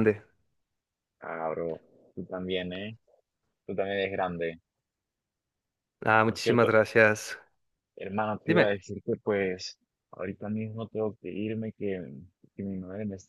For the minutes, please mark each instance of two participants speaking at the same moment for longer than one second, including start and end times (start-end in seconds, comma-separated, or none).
none